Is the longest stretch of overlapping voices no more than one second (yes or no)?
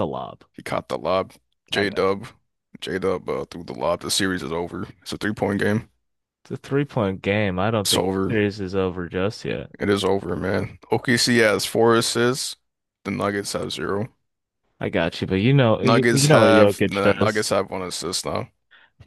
no